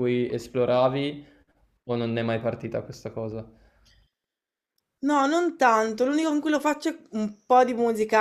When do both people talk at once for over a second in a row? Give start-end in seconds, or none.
none